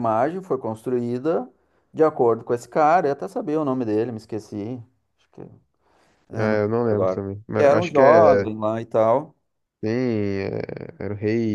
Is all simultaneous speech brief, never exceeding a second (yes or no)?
no